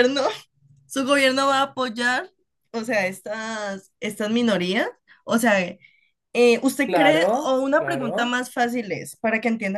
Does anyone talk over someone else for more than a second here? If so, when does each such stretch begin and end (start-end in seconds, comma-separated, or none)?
6.8-8.4